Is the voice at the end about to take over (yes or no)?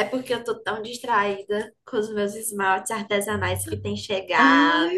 yes